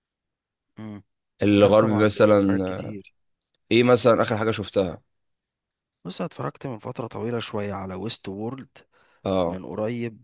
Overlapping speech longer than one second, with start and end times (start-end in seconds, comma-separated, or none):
1.6-3.0